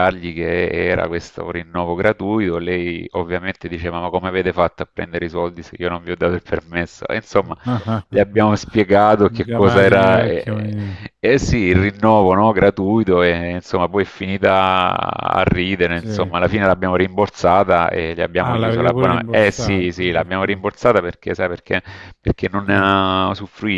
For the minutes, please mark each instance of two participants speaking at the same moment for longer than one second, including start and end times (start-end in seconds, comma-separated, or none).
9.4-10.7, 18.4-20.6